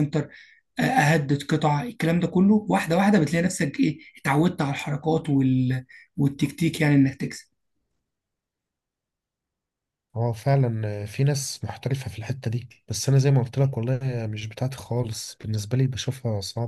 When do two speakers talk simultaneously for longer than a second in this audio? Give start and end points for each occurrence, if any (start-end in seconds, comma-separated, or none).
none